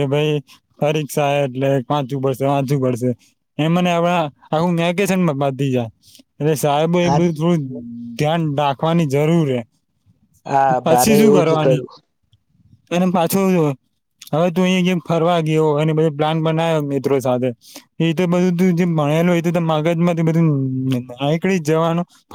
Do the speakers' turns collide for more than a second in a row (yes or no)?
no